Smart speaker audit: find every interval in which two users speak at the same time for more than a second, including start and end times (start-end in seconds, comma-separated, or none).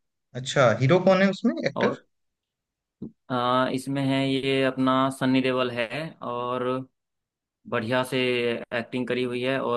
none